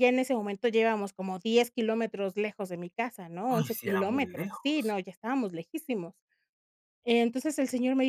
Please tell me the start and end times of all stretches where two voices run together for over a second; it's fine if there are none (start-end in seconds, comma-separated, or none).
3.5-5.0